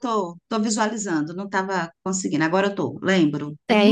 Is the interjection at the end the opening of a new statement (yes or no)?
yes